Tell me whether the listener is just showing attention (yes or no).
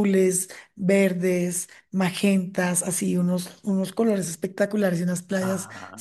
yes